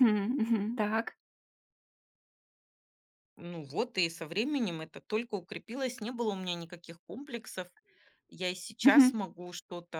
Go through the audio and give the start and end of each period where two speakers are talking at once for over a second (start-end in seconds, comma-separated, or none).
none